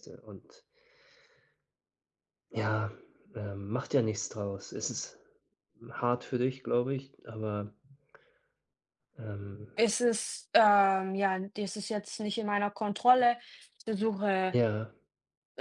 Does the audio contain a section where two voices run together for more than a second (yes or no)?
no